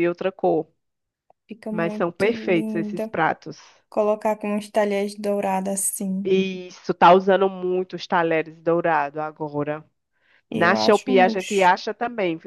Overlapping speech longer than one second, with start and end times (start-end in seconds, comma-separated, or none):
1.7-3.1, 10.5-11.7